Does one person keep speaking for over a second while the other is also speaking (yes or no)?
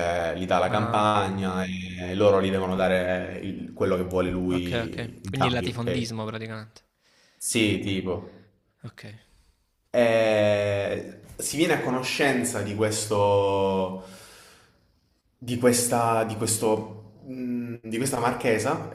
yes